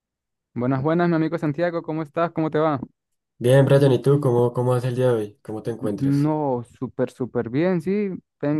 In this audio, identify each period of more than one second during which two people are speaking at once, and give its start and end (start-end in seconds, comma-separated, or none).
none